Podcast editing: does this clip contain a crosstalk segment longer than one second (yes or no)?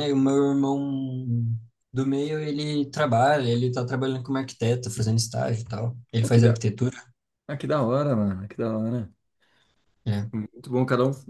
no